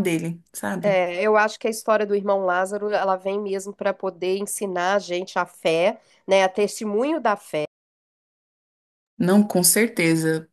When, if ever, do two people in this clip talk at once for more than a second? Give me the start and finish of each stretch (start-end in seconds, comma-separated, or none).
none